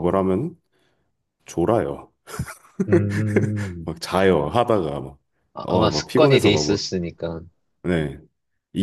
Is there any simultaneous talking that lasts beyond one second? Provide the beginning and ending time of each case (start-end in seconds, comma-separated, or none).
5.6-6.9